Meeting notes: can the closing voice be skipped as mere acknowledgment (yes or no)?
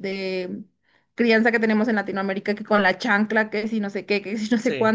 yes